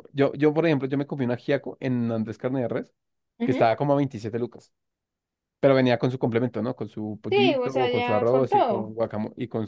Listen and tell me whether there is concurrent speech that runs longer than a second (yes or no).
yes